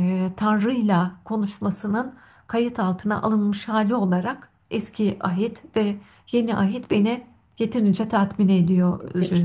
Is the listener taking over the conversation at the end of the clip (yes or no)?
yes